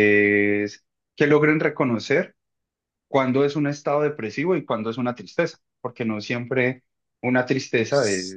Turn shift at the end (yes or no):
yes